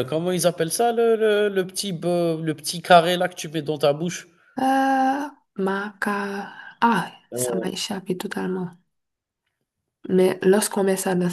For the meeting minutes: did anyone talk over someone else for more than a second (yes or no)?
no